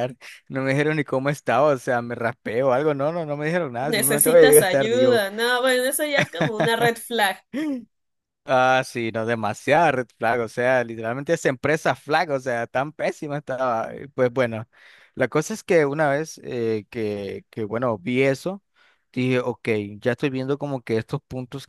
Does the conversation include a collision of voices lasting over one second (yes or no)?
yes